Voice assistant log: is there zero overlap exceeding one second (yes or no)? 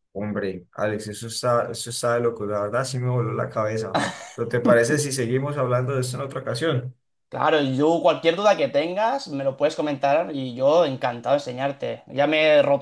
yes